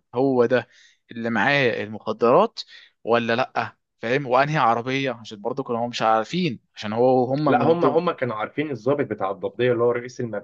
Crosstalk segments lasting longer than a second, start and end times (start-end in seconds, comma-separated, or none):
none